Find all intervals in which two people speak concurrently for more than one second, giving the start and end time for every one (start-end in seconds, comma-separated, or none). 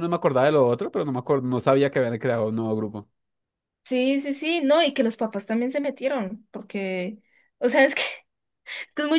none